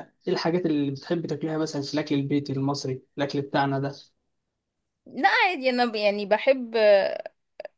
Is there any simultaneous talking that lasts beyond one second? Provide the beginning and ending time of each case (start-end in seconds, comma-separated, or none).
none